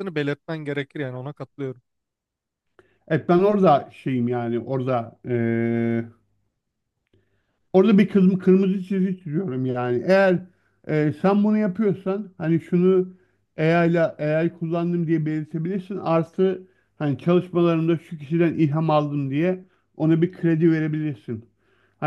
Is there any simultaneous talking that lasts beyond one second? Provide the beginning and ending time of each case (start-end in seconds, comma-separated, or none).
none